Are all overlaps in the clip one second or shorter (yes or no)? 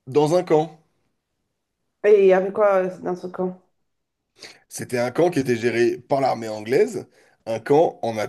yes